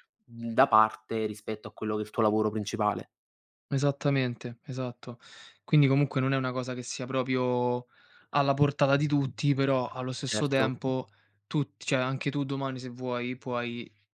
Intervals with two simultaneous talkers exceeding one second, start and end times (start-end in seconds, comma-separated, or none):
none